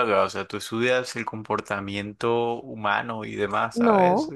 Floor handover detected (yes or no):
yes